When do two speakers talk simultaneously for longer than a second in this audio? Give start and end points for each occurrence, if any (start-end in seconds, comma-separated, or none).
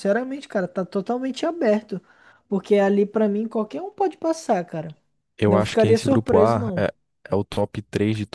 5.5-6.8